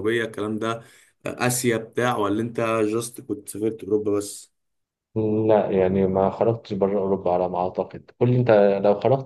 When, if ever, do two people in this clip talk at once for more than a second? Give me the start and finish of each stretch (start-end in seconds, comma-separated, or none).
none